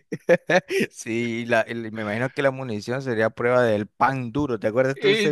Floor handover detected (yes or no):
yes